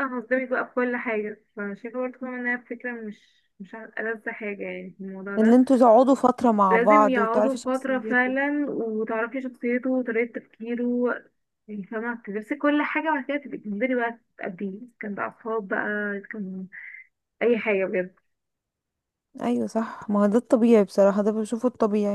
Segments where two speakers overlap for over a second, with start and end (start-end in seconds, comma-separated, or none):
6.7-8.3